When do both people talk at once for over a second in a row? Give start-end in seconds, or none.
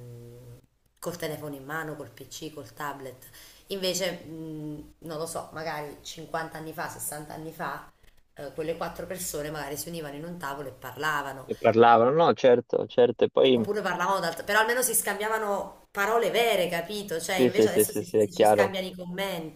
17.4-18.8